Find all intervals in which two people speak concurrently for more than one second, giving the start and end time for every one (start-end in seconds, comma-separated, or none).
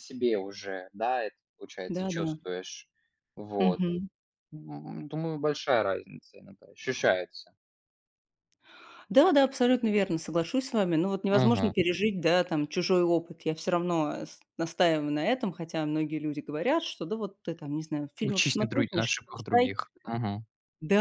18.2-19.7